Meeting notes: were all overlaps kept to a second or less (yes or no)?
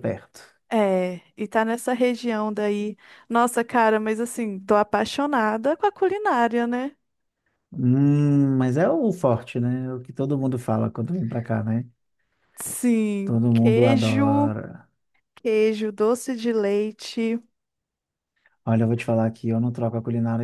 no